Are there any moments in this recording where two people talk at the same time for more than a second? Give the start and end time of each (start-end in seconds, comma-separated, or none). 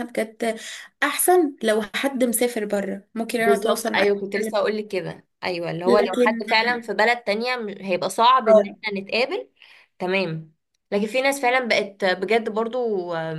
3.4-4.8